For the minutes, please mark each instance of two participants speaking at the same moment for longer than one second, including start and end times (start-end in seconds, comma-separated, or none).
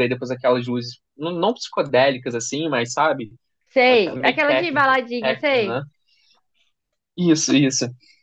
3.9-5.8